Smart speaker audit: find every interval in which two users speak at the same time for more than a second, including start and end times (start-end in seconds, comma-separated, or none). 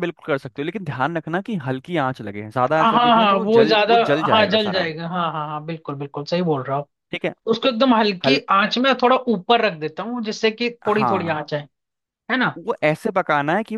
2.8-4.9